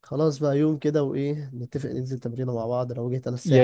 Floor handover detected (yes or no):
yes